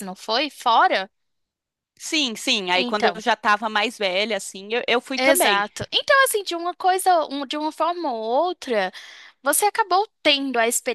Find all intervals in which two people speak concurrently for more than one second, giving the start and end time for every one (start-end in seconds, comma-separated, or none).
none